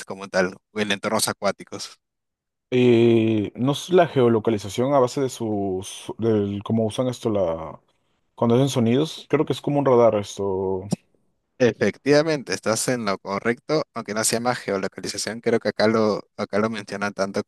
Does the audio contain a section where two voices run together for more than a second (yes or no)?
no